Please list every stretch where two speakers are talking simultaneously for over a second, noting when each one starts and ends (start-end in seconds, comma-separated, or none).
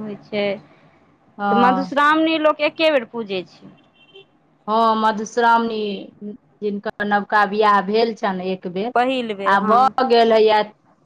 none